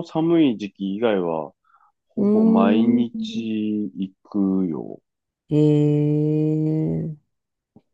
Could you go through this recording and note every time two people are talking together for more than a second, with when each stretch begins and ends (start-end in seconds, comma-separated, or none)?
2.2-3.5